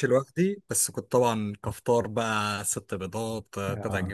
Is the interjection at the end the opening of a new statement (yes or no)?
no